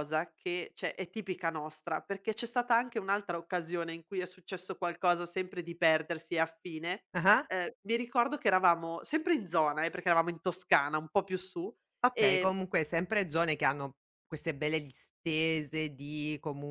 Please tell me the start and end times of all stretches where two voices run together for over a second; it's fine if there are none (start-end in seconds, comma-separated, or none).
none